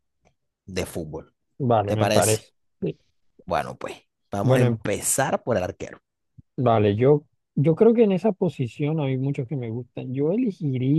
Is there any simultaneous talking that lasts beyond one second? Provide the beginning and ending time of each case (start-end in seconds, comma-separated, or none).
none